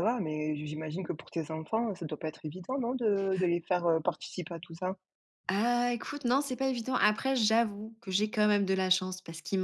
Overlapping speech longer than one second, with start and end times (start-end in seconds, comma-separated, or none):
none